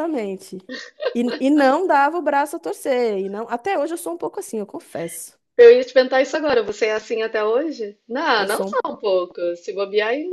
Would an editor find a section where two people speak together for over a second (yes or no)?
no